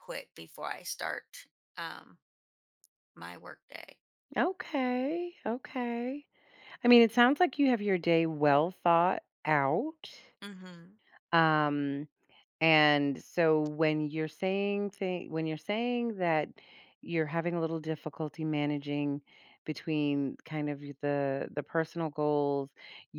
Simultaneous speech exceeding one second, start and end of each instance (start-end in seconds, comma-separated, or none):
none